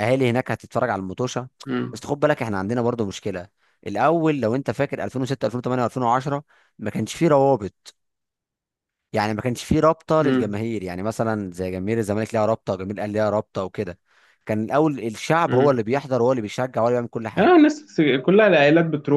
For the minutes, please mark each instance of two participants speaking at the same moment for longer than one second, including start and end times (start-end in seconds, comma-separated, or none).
none